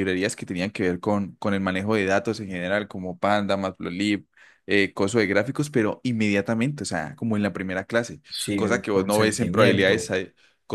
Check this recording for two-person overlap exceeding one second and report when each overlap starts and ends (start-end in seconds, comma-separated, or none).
8.3-10.1